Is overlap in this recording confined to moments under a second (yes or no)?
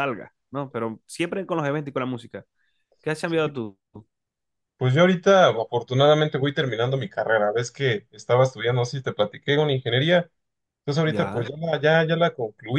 yes